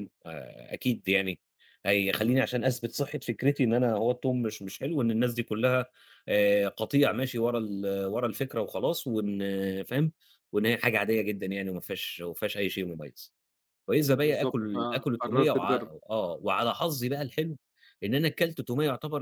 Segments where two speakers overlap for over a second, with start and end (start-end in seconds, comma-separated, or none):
14.0-15.9